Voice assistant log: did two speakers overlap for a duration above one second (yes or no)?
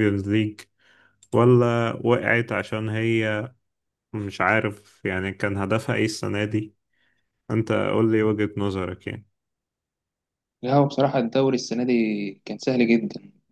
no